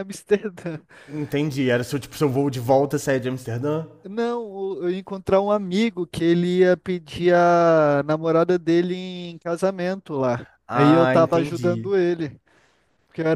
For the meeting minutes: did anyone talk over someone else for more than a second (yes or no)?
yes